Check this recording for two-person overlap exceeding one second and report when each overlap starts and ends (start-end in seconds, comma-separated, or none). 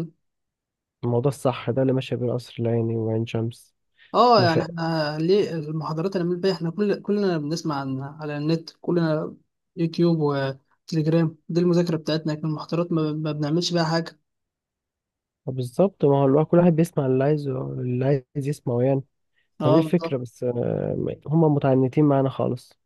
none